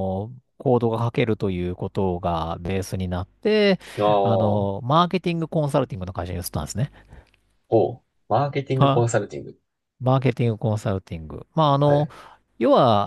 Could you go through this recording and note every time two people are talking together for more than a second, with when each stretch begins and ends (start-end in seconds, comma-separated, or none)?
none